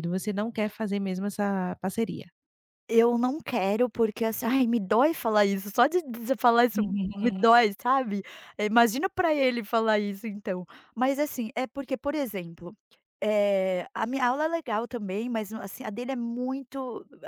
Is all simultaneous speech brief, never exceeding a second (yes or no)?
yes